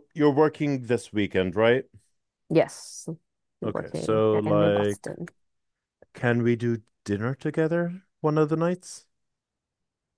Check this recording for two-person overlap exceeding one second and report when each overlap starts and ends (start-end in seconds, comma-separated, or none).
3.6-5.1